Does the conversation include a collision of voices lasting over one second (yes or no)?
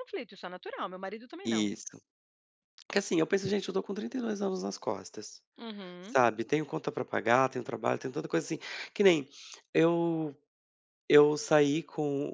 no